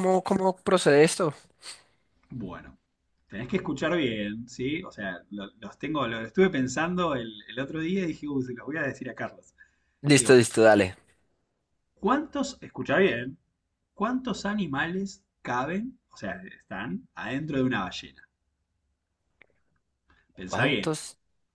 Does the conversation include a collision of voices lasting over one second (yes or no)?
no